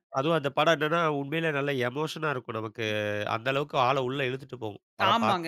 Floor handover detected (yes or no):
yes